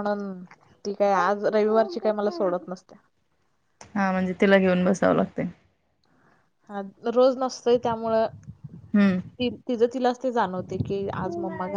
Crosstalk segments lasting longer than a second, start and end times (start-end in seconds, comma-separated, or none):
none